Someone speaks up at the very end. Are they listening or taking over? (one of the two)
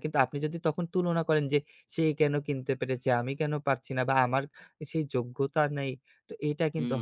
taking over